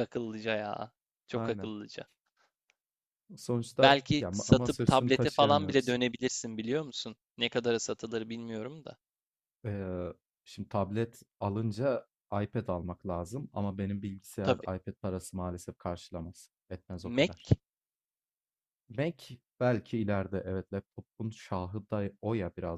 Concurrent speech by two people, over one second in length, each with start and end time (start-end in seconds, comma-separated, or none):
3.8-6.0